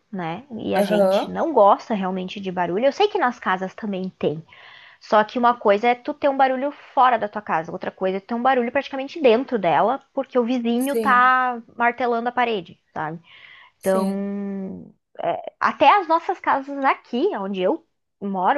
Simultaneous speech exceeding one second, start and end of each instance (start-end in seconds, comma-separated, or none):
none